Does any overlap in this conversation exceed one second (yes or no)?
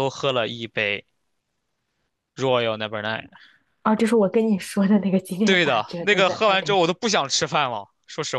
yes